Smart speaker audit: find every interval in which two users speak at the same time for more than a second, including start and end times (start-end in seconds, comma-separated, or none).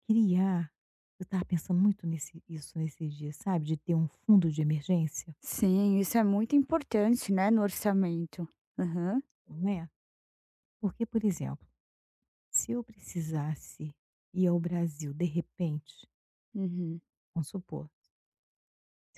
none